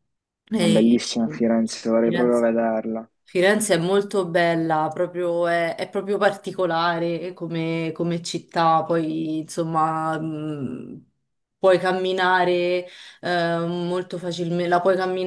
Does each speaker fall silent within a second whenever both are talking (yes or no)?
yes